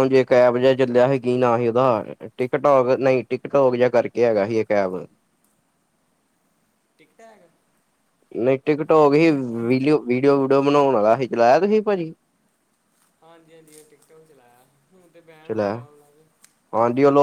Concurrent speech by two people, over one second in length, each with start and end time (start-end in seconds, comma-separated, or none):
none